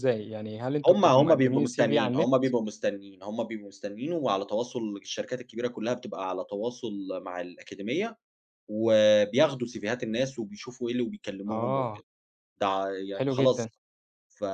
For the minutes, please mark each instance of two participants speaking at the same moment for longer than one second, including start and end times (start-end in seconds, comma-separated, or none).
0.9-2.3